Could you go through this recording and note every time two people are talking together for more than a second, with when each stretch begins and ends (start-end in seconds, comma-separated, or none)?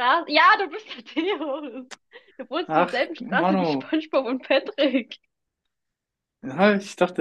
2.7-3.9